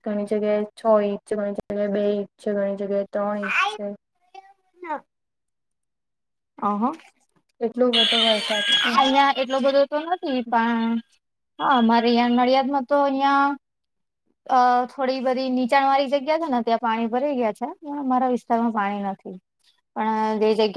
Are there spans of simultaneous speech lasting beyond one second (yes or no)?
no